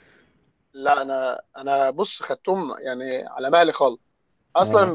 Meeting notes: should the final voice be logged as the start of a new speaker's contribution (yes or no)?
no